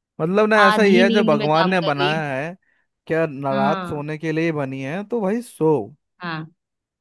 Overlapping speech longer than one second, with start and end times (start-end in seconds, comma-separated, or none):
0.7-2.3